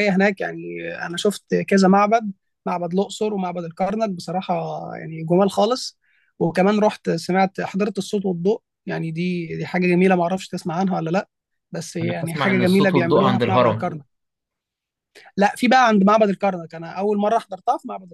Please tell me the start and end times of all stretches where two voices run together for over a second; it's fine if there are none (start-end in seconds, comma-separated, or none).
12.0-13.9